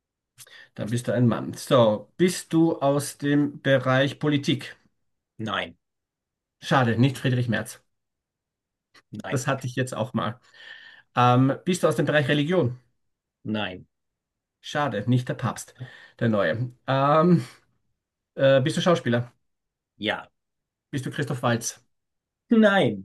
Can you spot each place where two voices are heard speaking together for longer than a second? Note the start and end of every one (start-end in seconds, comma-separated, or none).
none